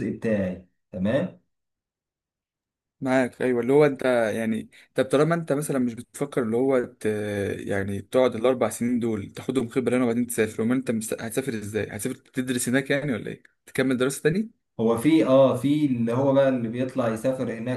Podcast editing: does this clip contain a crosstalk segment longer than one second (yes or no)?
no